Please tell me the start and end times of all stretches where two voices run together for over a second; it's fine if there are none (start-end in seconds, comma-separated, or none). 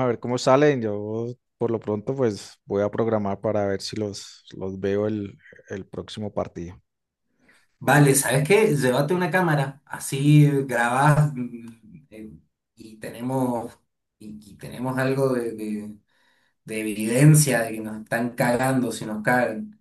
none